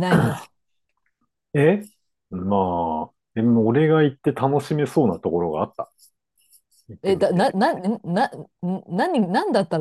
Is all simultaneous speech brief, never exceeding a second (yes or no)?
yes